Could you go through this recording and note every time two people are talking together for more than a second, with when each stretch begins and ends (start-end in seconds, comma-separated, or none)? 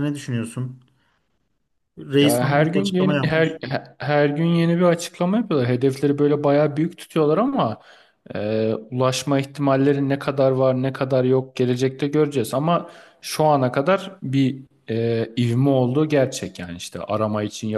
2.2-3.6